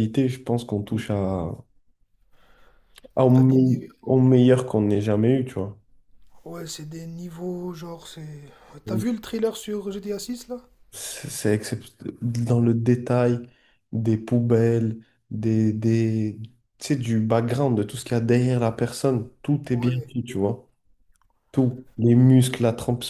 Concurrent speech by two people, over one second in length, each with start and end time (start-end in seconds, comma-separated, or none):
none